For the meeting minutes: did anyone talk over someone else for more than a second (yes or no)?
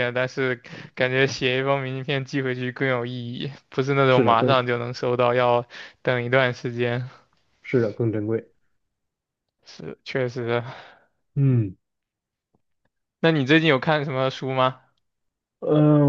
no